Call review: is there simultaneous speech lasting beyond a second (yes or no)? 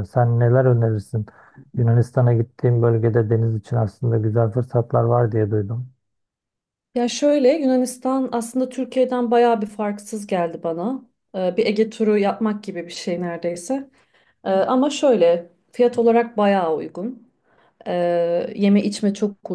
no